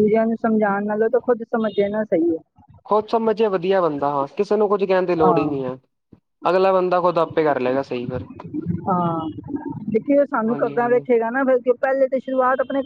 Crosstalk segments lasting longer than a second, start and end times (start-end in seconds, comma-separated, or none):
none